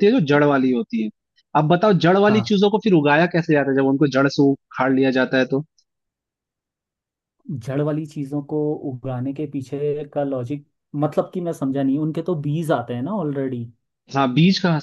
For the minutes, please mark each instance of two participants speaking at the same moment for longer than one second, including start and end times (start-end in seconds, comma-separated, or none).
none